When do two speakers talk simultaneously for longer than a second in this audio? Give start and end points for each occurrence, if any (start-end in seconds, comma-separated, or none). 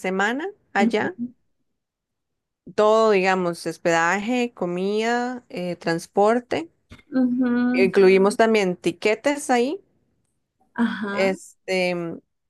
none